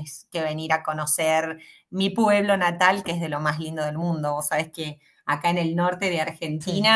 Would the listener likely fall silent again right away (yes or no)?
yes